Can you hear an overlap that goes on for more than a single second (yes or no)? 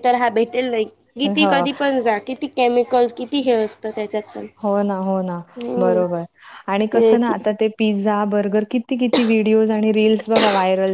no